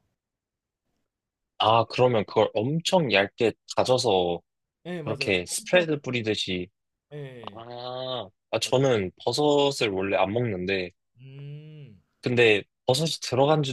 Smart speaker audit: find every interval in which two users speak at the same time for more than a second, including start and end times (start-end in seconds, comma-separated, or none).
5.0-6.4